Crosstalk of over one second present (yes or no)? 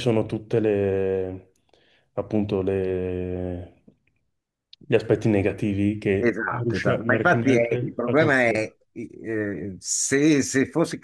yes